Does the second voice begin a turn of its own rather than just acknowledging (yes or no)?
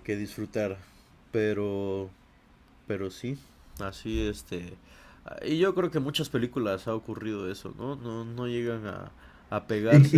yes